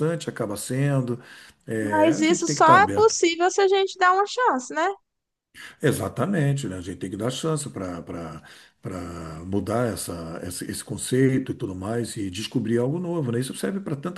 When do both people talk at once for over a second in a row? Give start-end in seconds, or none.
1.8-3.1